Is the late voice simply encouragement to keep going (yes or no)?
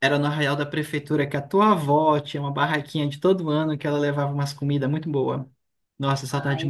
no